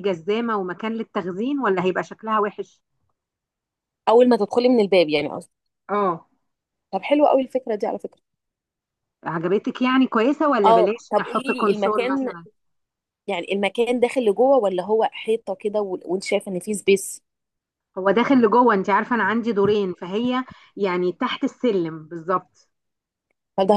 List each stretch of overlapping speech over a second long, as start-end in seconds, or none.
10.6-12.3